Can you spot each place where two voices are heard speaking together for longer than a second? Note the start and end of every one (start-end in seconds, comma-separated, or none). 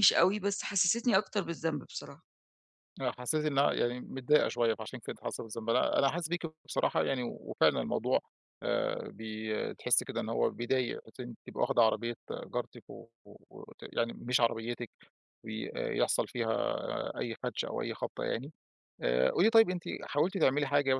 none